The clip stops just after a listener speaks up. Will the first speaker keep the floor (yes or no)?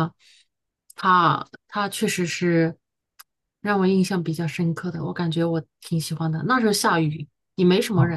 no